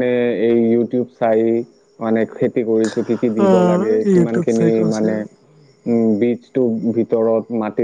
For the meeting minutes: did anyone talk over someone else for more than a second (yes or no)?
yes